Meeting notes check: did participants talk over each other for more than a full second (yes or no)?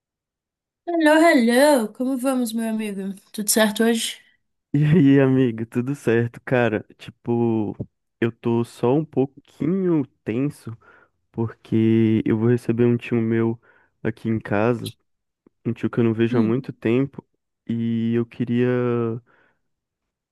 no